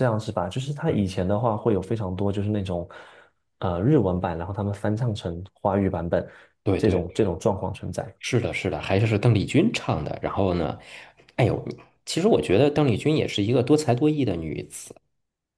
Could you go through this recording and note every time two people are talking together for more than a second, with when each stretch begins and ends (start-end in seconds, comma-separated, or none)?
none